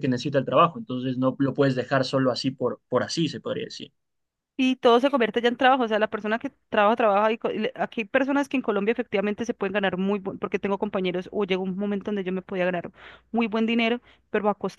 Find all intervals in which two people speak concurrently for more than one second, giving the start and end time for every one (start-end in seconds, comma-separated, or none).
none